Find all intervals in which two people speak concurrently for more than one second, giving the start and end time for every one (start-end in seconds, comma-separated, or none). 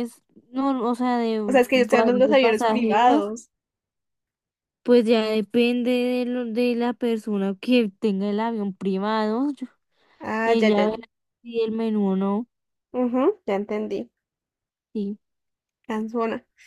1.5-3.3